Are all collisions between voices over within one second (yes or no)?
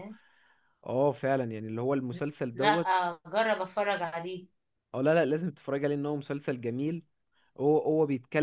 yes